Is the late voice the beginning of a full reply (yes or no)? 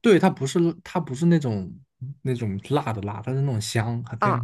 yes